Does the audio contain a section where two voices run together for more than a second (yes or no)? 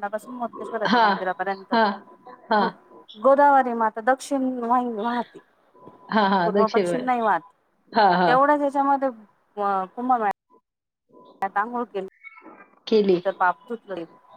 no